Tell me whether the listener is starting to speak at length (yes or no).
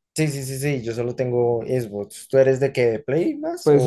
yes